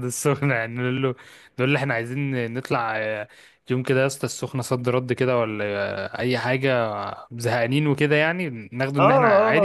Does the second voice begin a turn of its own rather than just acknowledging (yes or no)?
yes